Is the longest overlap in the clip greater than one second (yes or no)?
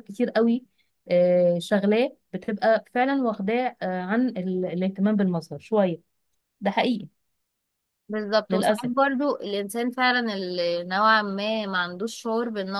no